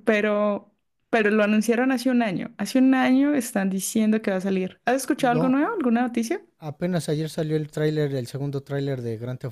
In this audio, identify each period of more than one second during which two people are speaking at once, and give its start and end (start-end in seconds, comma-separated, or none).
none